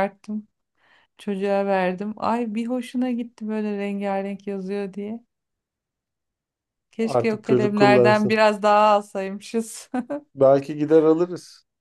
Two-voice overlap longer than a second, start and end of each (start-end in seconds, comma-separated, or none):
7.0-8.4